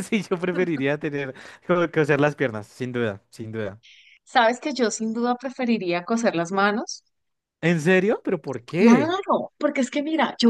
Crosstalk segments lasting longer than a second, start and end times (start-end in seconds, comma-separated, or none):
none